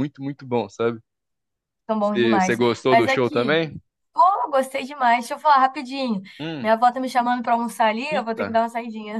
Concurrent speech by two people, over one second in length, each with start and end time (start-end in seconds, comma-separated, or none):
2.0-3.6